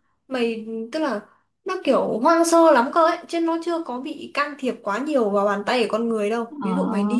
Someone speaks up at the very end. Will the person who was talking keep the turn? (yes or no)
yes